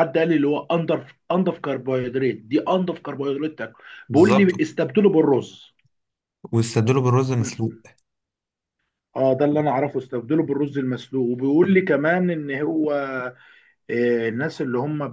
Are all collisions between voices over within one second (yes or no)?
yes